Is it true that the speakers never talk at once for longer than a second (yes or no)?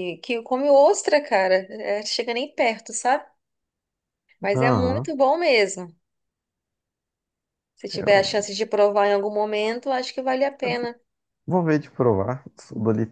yes